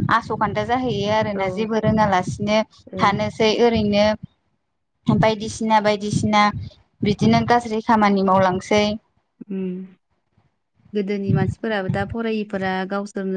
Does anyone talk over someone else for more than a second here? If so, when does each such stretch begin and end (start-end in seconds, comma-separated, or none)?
none